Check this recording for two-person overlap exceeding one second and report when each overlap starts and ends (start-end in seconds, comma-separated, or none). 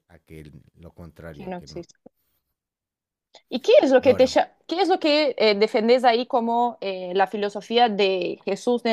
none